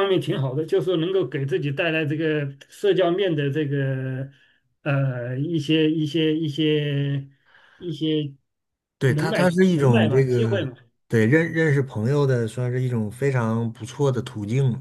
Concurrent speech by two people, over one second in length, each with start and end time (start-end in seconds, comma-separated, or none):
9.1-10.7